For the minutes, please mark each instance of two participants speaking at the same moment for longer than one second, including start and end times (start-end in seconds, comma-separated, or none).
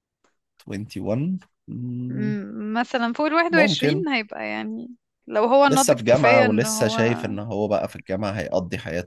5.7-7.0